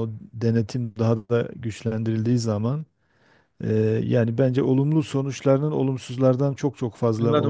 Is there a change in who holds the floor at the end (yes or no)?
yes